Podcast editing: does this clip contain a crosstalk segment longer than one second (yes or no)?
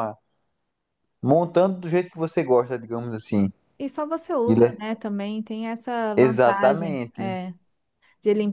yes